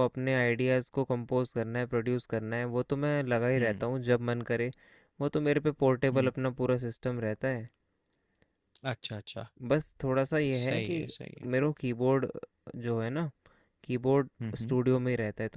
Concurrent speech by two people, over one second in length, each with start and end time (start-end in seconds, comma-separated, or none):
none